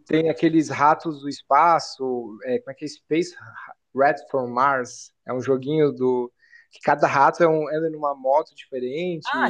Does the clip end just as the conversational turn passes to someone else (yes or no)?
yes